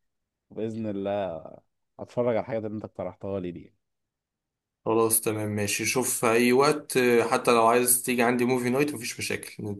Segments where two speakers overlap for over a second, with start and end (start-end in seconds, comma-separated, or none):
none